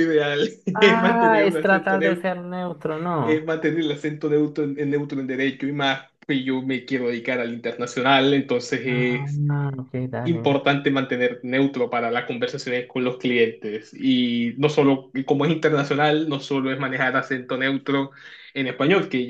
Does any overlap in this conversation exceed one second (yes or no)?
yes